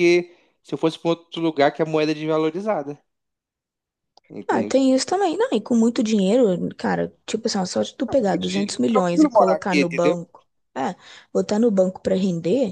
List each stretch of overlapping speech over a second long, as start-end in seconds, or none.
8.1-10.2